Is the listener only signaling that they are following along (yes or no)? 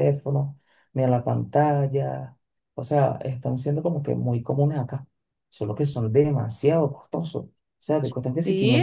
yes